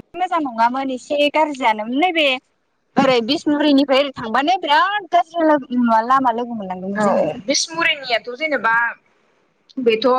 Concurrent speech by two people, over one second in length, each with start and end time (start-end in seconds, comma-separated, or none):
none